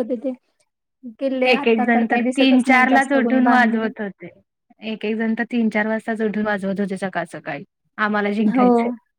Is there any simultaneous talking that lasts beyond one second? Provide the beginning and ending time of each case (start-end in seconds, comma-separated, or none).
1.5-3.9